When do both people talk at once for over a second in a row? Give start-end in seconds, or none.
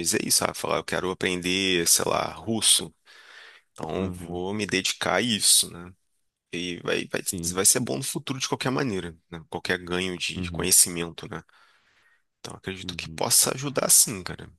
none